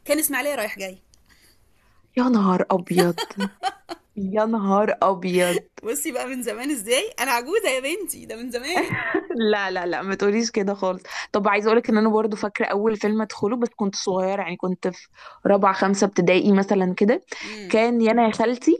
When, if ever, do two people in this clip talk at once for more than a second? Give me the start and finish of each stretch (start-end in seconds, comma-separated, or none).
none